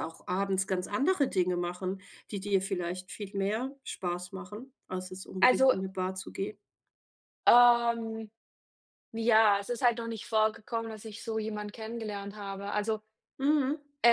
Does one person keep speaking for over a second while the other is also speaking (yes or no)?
no